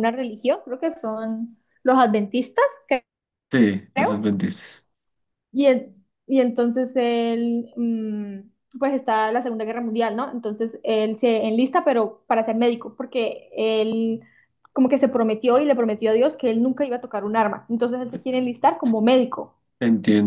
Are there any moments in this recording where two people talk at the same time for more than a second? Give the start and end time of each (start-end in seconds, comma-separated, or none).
none